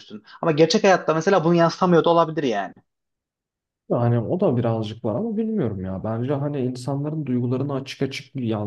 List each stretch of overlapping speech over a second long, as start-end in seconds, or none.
none